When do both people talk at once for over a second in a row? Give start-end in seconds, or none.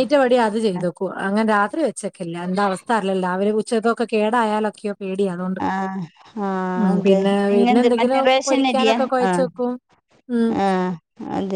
6.9-9.4